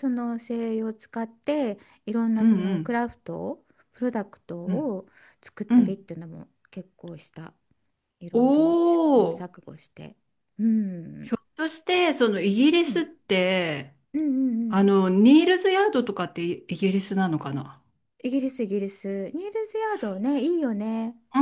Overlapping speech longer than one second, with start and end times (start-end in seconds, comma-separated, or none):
8.3-9.6